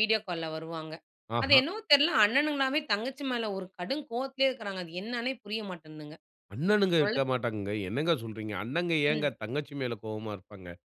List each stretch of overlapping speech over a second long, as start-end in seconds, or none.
none